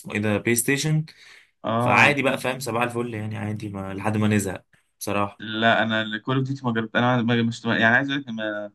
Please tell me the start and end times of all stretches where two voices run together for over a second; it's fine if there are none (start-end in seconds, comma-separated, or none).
none